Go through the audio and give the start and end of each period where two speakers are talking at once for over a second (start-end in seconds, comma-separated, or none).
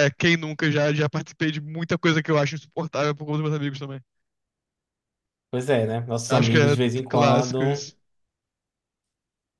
6.3-7.8